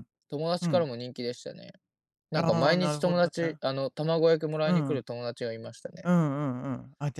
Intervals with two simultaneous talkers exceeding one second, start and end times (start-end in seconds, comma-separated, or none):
2.3-3.6